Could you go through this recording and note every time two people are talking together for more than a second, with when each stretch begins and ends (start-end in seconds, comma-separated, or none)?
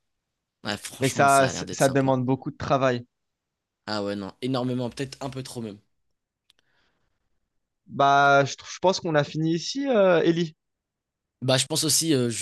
1.0-2.2